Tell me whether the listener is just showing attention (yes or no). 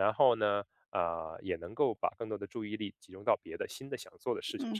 no